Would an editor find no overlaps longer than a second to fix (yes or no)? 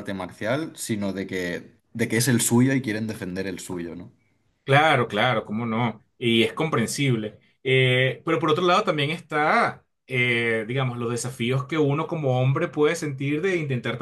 yes